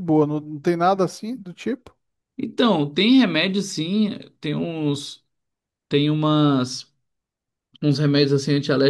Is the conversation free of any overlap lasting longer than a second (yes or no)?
yes